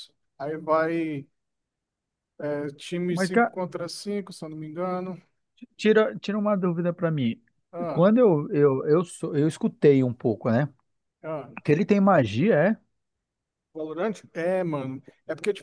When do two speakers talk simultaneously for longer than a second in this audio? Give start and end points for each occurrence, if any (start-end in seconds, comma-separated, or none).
none